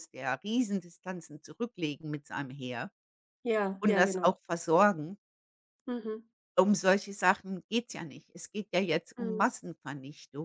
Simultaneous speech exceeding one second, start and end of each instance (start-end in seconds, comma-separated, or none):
none